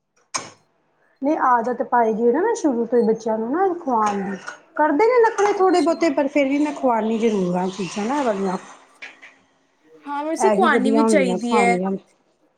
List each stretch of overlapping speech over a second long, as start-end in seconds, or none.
10.5-11.8